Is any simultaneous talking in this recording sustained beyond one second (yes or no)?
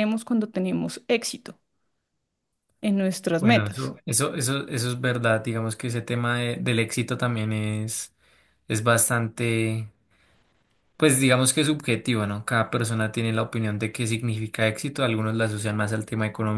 no